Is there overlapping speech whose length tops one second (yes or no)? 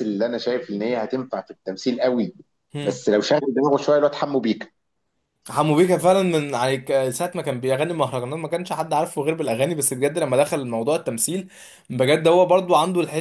no